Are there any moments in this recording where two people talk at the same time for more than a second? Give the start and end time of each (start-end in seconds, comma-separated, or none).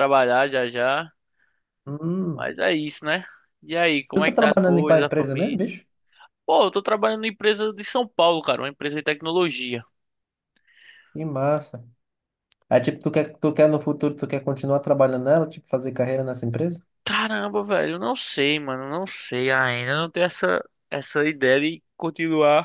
4.1-5.7